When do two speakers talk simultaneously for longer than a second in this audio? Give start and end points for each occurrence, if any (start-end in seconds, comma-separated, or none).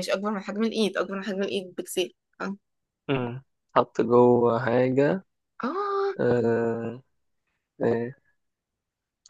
none